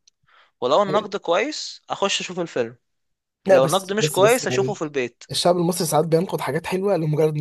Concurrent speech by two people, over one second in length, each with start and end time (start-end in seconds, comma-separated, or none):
3.5-4.8